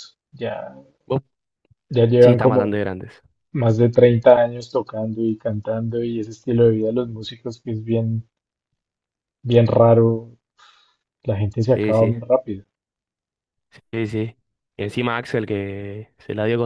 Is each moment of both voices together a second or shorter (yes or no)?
yes